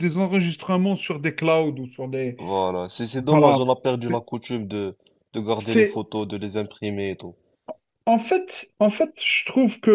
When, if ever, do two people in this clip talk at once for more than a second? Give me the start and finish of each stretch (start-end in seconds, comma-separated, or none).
none